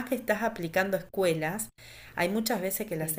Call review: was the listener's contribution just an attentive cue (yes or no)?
yes